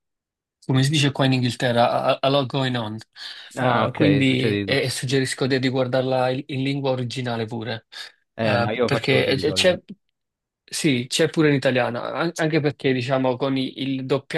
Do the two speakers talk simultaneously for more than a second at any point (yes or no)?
yes